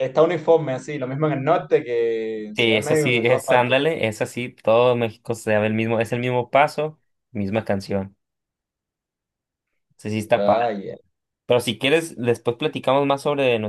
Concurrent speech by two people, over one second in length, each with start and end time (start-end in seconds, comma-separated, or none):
2.6-3.8